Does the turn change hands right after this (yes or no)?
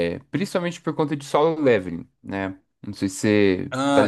yes